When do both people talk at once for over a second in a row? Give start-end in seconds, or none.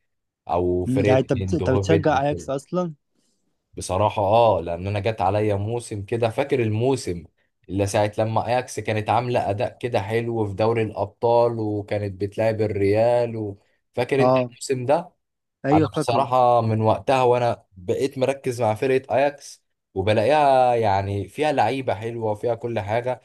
0.9-2.5